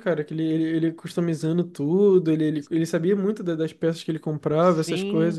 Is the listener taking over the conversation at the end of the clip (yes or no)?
yes